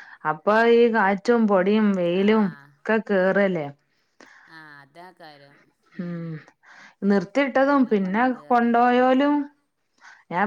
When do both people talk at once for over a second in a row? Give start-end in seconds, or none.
7.5-9.1